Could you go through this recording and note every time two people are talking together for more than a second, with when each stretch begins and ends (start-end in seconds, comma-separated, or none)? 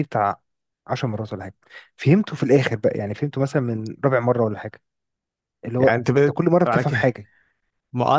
5.8-7.1